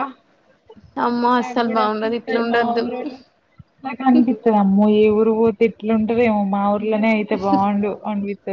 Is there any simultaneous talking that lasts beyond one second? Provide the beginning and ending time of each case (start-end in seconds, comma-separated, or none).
1.4-2.8